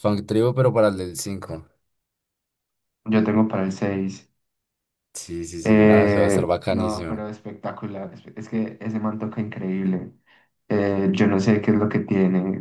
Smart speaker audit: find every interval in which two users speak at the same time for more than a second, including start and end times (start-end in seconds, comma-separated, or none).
5.6-7.3